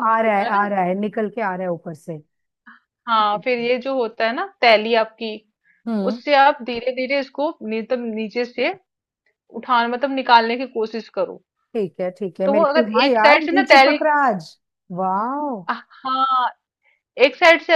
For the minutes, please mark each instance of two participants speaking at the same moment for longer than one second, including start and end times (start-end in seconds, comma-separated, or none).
12.4-14.0